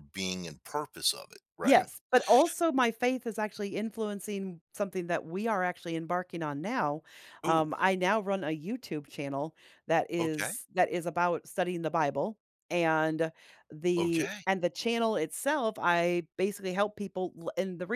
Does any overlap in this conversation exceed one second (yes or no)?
no